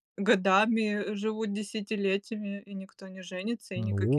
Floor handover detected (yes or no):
yes